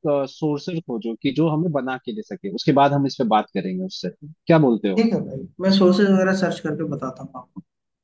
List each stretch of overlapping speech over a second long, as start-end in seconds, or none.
none